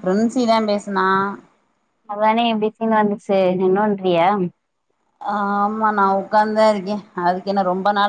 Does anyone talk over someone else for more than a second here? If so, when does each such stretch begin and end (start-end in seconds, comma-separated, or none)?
none